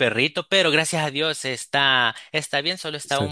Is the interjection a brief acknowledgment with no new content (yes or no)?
yes